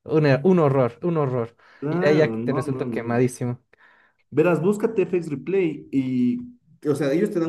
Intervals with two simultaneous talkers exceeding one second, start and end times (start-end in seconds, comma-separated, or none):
1.8-3.3